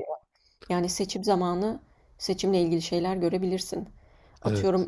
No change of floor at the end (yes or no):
yes